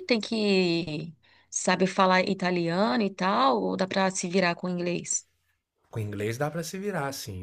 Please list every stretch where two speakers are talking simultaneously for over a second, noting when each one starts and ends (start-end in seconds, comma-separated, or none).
none